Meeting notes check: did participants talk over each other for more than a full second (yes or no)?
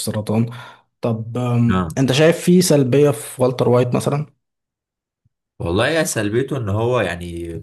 no